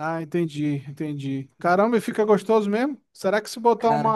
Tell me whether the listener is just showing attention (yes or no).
yes